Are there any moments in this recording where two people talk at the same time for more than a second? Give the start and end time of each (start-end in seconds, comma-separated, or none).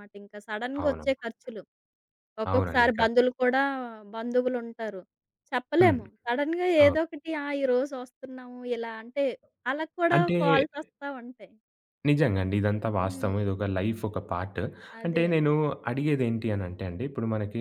none